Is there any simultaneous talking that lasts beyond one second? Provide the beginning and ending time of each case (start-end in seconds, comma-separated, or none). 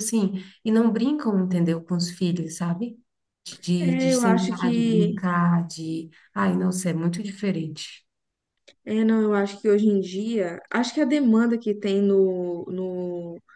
3.8-5.2